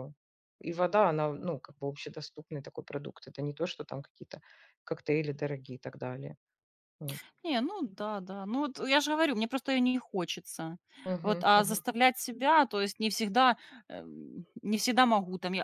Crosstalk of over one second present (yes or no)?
no